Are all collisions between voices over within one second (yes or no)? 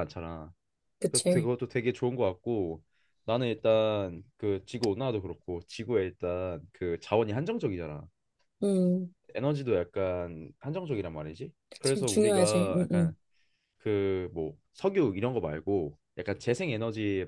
no